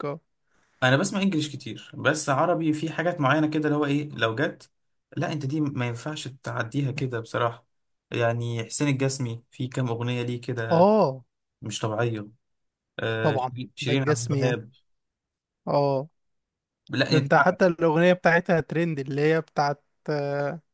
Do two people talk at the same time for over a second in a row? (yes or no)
yes